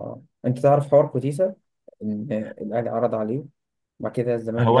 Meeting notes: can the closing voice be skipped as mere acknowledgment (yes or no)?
no